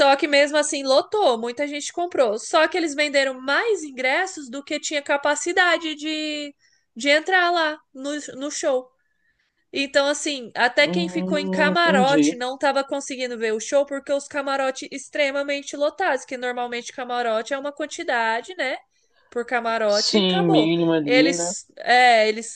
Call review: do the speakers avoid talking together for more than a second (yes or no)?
no